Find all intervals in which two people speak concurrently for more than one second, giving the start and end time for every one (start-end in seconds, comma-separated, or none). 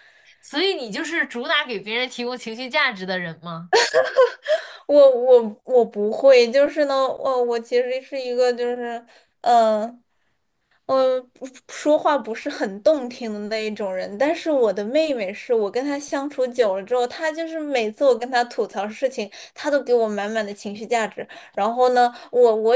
none